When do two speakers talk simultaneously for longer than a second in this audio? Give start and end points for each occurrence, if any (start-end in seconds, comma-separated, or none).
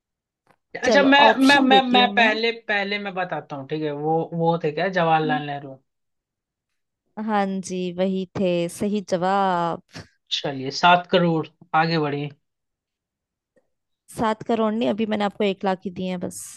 0.8-2.4